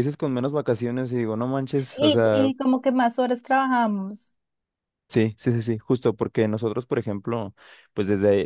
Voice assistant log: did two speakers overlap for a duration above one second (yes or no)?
no